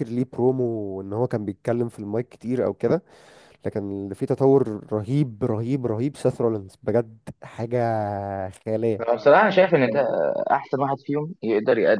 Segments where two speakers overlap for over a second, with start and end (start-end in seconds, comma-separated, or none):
none